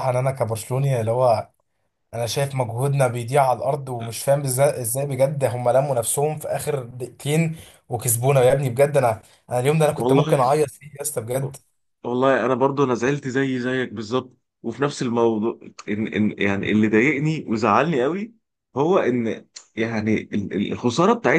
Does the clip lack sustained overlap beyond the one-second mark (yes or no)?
yes